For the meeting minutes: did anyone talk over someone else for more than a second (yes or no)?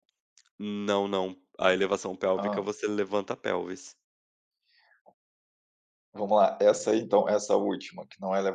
no